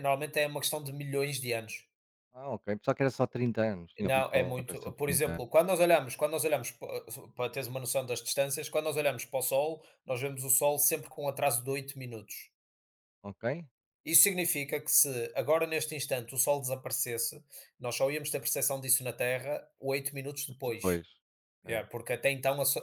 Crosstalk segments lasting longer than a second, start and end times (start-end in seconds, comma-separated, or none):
4.0-5.5